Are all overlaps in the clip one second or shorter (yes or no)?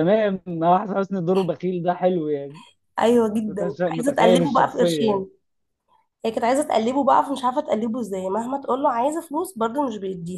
no